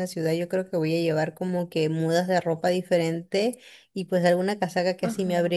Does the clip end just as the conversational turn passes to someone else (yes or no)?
no